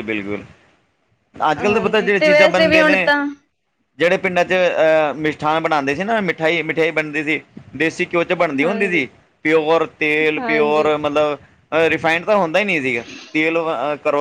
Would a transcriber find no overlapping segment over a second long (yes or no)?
no